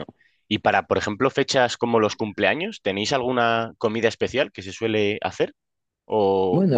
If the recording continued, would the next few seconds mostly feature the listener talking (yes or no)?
no